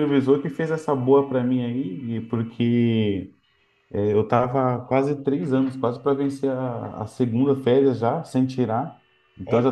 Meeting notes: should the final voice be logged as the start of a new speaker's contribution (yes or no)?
no